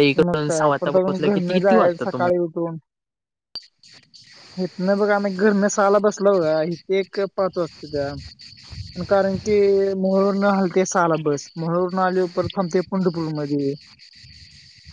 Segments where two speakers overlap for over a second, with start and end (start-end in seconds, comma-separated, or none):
0.6-2.4